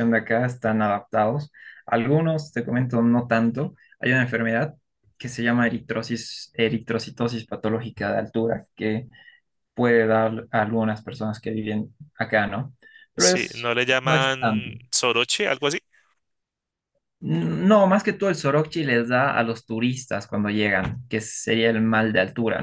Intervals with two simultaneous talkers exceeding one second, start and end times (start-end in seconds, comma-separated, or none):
13.2-14.7